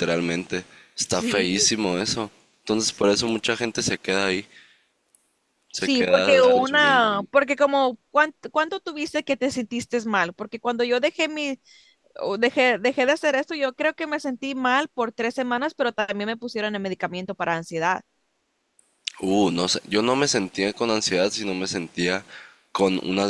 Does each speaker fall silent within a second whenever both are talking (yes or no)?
no